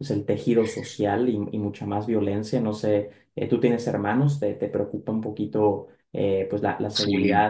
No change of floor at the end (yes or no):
yes